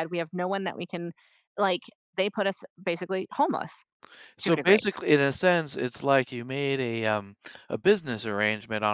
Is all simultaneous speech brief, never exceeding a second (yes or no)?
yes